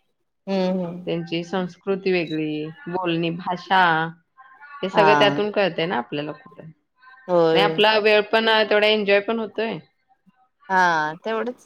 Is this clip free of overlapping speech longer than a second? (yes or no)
yes